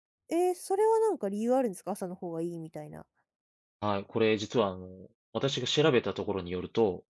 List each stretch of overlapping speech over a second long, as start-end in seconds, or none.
none